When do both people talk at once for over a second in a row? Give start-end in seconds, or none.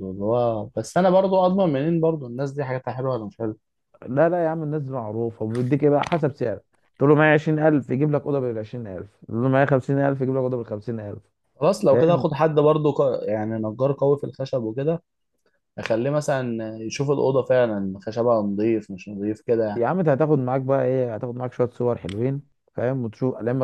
none